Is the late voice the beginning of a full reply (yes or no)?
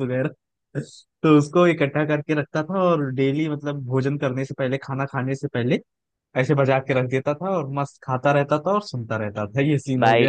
yes